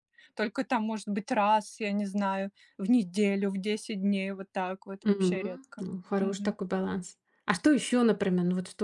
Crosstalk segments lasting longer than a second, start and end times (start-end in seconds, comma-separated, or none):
5.0-6.6